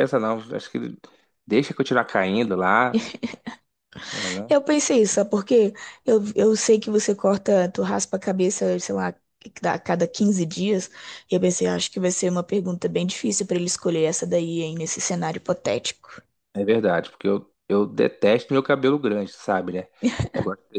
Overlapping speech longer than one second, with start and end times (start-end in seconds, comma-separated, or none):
none